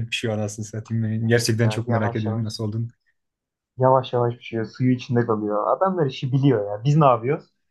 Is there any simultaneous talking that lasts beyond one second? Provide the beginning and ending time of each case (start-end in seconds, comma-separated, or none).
1.2-2.5